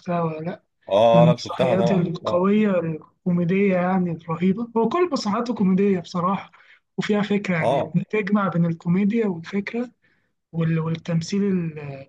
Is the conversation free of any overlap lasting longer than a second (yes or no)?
no